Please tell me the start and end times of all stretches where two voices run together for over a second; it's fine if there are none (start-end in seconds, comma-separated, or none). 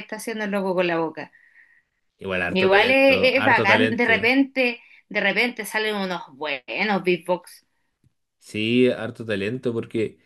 2.5-4.3